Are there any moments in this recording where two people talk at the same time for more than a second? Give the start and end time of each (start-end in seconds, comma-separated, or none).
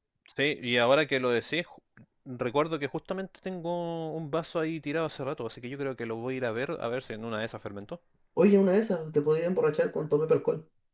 none